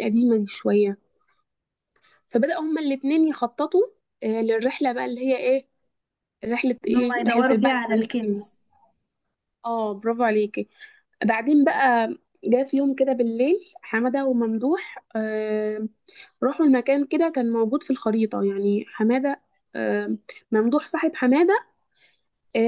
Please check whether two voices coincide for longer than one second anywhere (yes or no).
yes